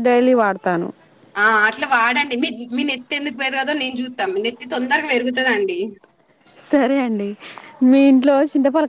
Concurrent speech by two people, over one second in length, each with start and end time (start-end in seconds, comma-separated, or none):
none